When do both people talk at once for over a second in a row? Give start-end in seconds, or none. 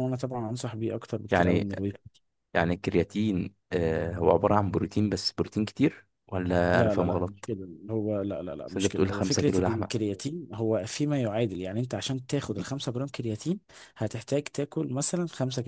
8.7-9.9